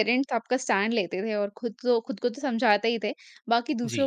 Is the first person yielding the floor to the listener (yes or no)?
no